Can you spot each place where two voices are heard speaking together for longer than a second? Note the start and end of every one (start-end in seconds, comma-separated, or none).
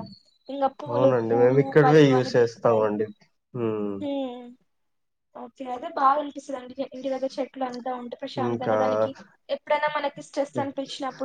0.9-2.8